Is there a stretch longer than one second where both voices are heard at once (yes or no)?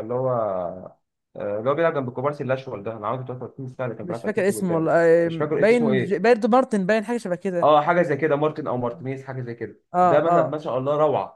yes